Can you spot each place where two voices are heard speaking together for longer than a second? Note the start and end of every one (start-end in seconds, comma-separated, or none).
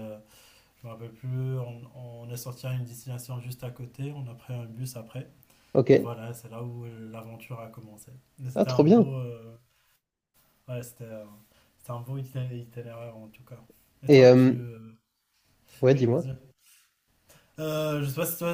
none